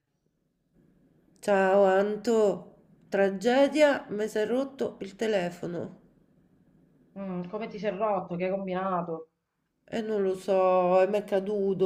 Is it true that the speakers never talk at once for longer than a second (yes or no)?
yes